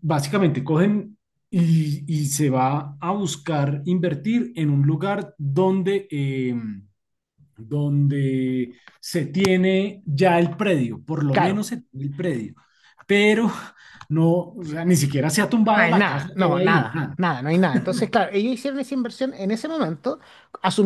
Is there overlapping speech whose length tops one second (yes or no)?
yes